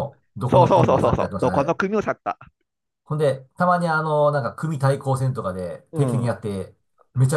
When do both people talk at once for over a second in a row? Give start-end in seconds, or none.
0.5-1.8